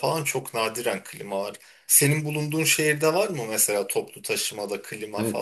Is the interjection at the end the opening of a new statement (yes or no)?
yes